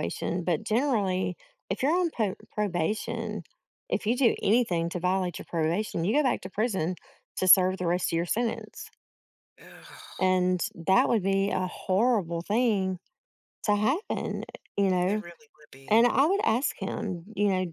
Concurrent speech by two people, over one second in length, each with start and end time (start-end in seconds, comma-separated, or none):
none